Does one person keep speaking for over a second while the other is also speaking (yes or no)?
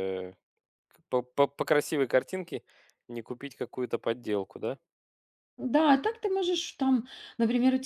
no